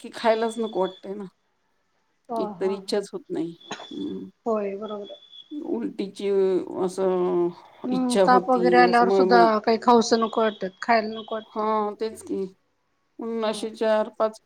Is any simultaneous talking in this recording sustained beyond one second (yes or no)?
yes